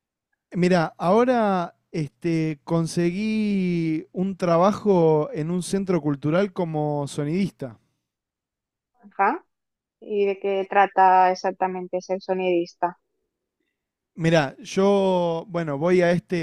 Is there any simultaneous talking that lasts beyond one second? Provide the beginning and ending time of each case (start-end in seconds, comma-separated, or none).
none